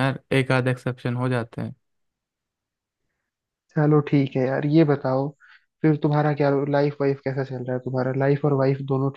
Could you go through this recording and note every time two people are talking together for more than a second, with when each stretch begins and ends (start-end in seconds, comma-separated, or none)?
none